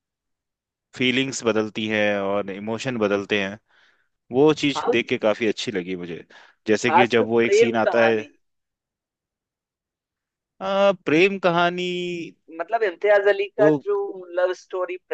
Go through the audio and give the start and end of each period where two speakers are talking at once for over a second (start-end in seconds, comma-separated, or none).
6.9-8.3